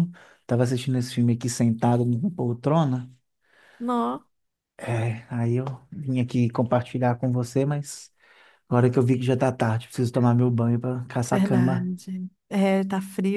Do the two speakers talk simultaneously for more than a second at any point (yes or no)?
no